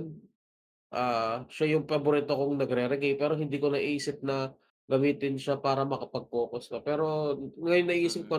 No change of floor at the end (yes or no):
yes